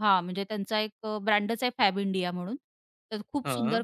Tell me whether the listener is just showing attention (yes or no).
yes